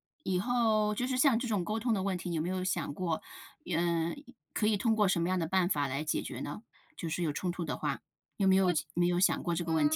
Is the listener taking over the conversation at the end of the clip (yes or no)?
yes